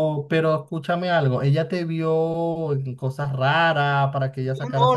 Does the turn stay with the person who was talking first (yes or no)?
no